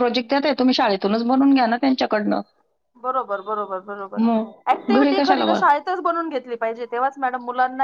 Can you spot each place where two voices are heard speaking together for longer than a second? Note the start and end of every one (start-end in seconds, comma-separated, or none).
4.2-5.6